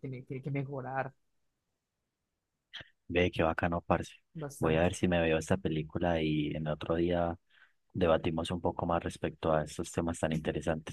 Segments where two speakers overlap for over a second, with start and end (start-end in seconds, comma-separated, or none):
none